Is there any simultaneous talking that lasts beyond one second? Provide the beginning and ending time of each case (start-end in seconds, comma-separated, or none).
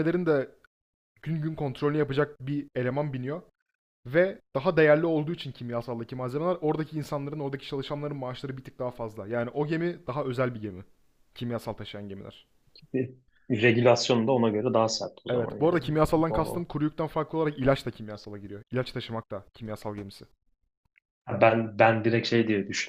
15.3-16.7